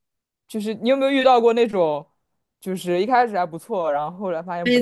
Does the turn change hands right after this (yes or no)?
yes